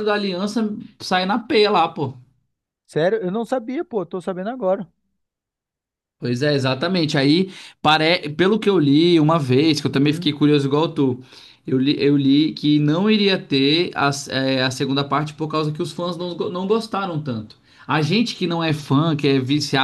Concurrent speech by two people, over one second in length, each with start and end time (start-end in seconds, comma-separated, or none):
none